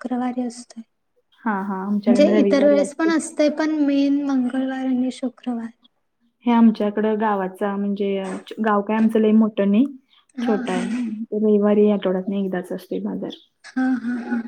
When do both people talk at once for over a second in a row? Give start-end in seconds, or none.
1.4-3.1